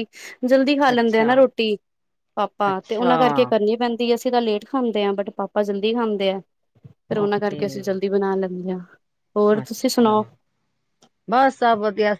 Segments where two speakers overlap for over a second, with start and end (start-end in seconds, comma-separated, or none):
none